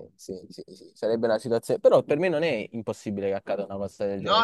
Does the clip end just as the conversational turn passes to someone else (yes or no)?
yes